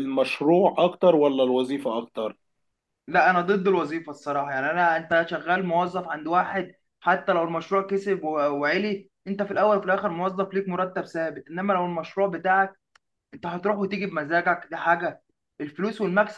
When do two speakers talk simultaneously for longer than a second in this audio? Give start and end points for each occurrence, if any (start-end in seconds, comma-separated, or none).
none